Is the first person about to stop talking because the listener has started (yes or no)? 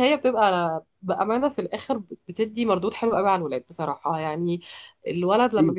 no